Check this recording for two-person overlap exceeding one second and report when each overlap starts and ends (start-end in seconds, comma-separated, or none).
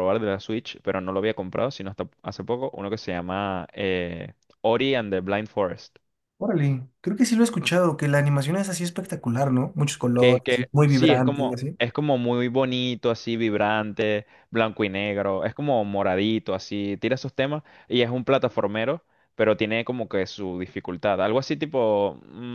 10.2-11.8